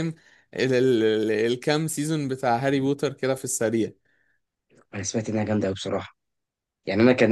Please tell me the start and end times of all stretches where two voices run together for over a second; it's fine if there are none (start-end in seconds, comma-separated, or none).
none